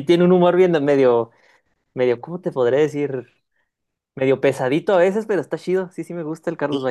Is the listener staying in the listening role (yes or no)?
no